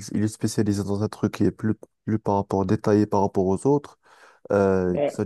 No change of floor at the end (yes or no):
yes